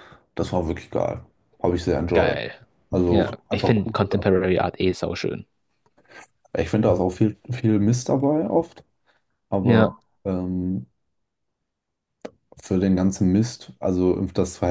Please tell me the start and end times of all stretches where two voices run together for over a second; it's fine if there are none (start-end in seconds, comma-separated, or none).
3.1-4.5